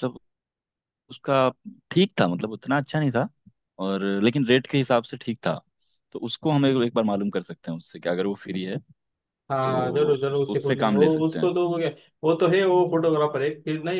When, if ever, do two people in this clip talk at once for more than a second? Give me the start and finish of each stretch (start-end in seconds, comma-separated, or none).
9.6-11.5